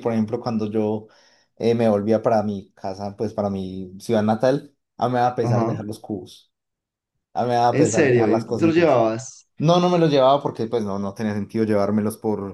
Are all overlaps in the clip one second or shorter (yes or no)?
no